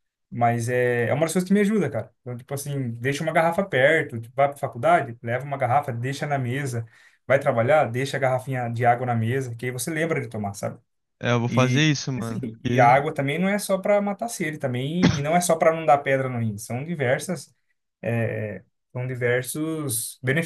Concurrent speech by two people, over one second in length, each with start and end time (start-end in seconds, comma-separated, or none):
11.5-13.0